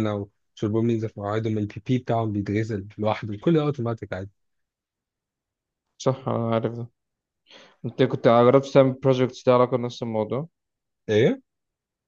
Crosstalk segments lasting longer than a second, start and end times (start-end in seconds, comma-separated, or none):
none